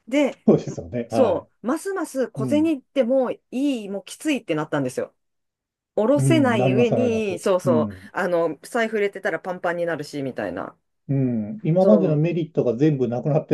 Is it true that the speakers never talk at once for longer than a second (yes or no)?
no